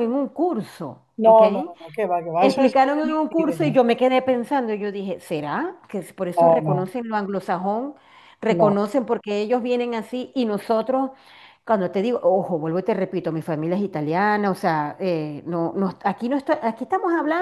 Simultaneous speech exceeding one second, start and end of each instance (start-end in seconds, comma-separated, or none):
2.4-3.7